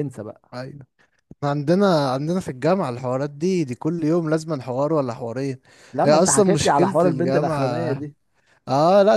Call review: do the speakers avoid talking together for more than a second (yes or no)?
no